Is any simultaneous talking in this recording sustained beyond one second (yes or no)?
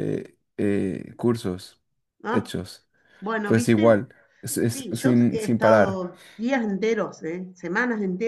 yes